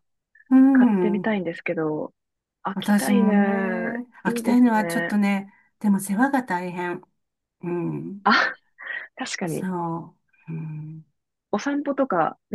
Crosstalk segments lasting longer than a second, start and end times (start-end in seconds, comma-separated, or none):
2.7-5.1